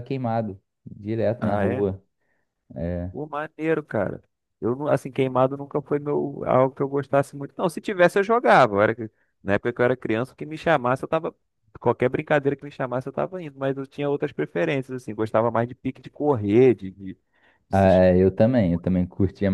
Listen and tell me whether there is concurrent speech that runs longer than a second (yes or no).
no